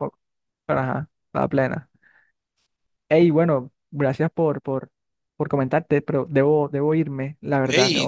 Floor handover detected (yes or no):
yes